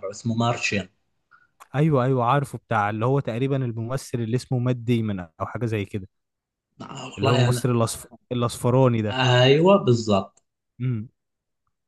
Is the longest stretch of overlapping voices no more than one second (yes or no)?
yes